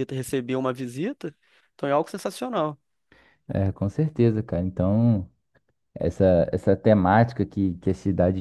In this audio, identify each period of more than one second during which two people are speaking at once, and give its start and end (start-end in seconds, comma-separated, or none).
none